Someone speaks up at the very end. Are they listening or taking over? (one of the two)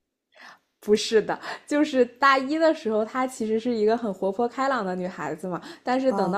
listening